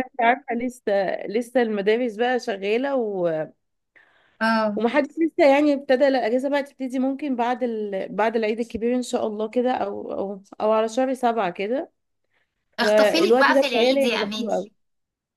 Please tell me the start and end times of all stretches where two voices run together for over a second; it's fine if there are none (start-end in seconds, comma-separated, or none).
12.8-14.6